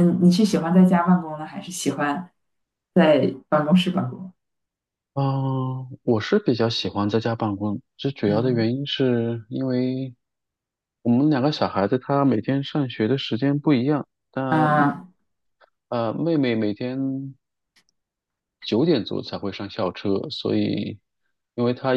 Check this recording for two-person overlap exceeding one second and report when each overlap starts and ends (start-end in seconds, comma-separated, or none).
none